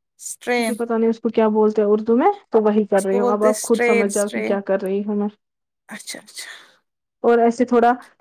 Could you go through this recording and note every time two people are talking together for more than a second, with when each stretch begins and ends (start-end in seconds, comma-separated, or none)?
3.0-4.5